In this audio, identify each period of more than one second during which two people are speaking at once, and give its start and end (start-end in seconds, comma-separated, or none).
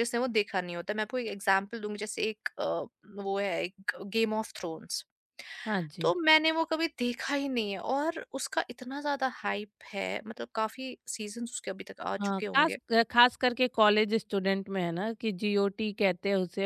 none